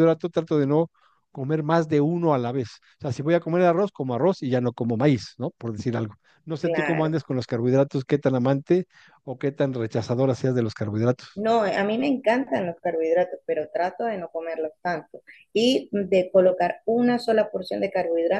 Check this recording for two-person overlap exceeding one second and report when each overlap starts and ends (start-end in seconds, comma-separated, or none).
none